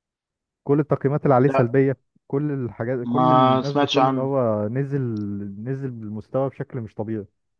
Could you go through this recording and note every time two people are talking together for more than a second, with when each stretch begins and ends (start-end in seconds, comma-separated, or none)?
3.0-4.3